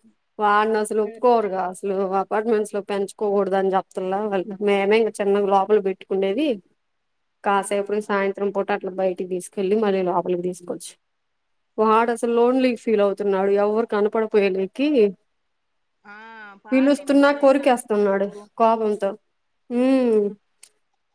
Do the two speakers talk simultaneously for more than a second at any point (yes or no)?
yes